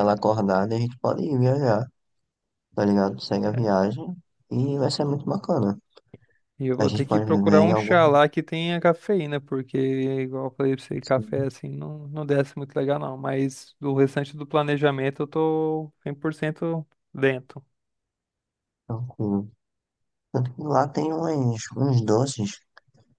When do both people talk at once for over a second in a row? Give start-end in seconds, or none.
6.8-8.2